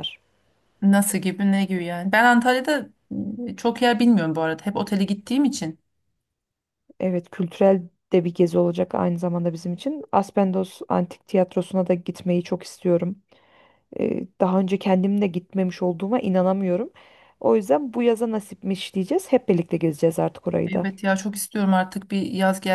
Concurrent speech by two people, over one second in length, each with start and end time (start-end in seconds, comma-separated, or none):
none